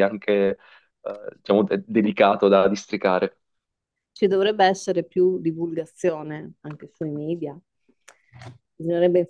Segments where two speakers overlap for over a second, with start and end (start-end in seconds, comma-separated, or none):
none